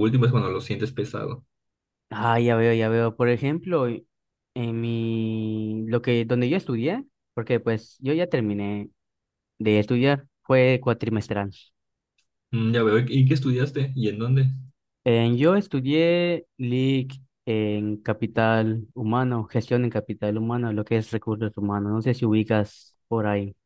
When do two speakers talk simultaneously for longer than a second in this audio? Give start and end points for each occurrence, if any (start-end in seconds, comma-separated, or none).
none